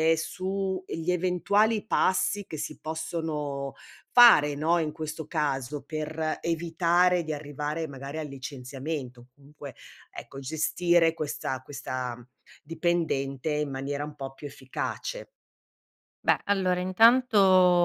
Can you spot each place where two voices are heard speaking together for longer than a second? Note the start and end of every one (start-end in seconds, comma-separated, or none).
none